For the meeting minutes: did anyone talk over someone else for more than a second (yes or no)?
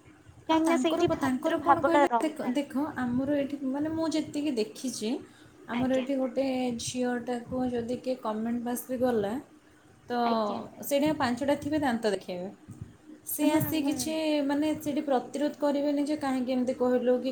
yes